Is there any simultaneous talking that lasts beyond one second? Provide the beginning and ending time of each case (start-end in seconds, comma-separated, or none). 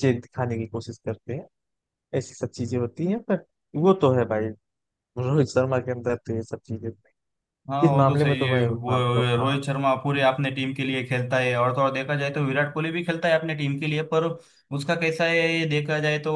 7.8-9.6